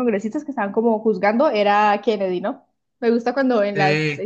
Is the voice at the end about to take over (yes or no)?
no